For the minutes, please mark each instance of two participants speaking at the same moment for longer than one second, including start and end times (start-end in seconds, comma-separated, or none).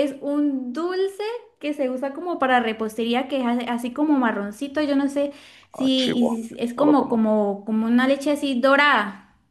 5.7-7.2